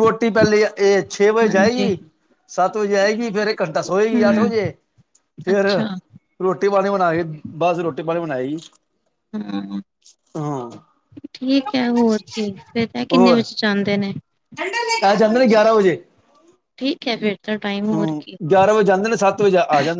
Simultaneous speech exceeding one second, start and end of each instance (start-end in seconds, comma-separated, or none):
none